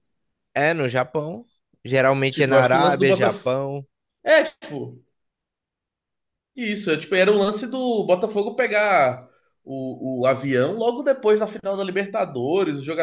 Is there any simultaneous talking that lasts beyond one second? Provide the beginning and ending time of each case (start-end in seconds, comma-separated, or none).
2.3-3.5